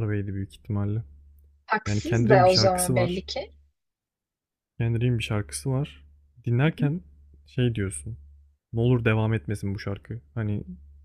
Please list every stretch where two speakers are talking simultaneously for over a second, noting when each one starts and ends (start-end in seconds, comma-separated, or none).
1.9-3.3